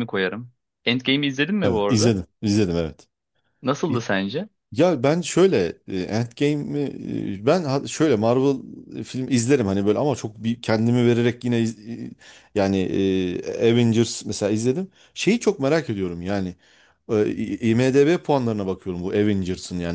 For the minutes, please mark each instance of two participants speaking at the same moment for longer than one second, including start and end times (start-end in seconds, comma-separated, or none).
none